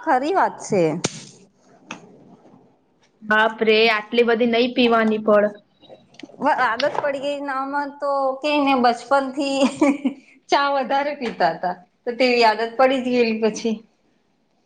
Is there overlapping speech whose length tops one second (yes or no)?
no